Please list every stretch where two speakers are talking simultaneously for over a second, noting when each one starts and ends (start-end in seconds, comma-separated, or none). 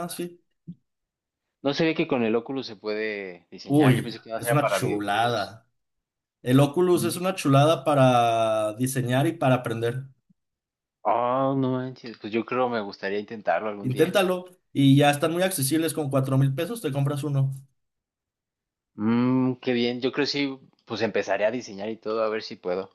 3.7-5.6